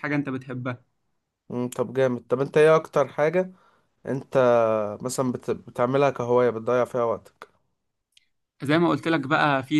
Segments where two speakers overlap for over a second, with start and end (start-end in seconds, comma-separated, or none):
none